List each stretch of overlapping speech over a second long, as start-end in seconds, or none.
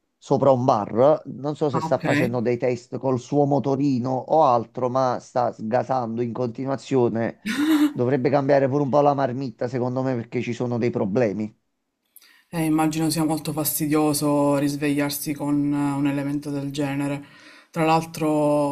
none